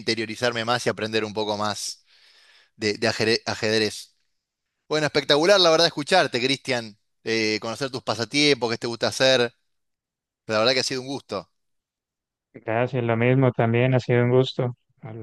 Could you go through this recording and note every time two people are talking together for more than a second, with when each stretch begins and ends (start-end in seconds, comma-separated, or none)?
none